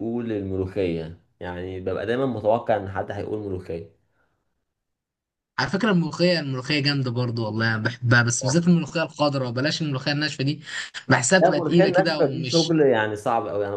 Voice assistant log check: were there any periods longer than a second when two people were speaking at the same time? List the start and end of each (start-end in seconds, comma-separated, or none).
11.4-12.8